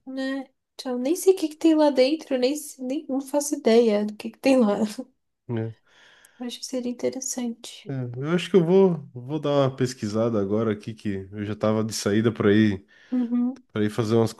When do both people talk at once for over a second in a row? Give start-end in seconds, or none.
none